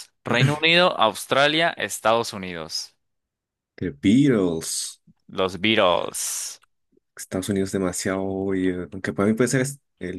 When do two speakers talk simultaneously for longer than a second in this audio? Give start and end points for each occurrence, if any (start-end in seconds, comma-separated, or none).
none